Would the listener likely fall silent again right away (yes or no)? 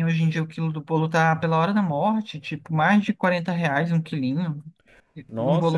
no